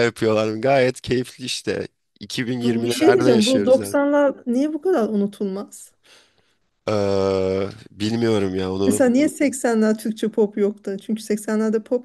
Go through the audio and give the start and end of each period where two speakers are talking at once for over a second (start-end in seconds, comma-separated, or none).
2.6-4.0